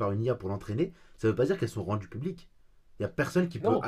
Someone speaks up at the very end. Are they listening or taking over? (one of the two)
listening